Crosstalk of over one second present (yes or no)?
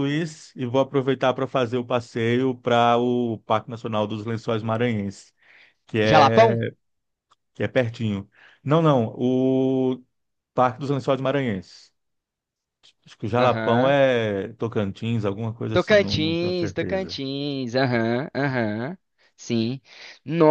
yes